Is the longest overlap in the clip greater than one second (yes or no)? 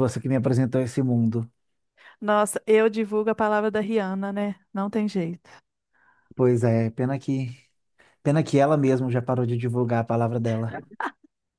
no